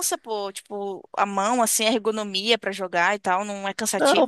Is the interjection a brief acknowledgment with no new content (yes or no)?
no